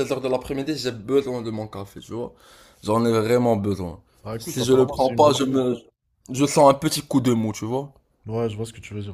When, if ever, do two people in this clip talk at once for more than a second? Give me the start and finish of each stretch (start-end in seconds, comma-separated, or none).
4.4-5.6